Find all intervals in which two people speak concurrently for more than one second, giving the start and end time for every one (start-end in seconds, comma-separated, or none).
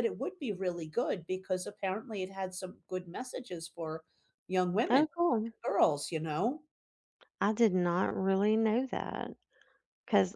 none